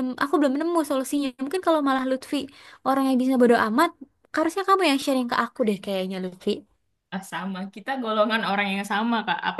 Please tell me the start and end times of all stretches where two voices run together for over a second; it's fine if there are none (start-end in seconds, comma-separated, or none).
none